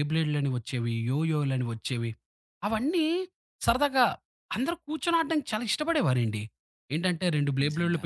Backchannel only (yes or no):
yes